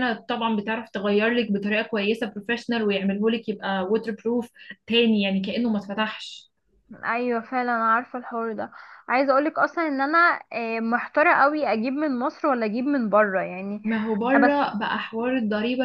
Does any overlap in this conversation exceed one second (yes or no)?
no